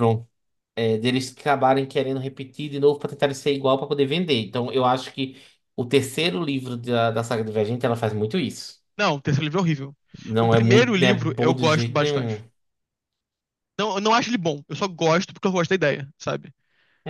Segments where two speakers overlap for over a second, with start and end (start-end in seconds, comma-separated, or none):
10.4-12.4